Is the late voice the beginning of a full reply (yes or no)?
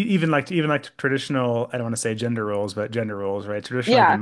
no